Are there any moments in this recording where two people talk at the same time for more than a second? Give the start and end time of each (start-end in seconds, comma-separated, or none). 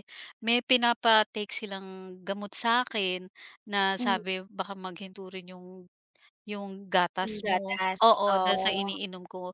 7.2-8.9